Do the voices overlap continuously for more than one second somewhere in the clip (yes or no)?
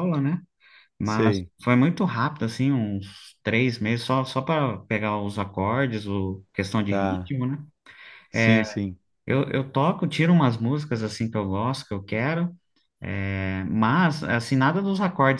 no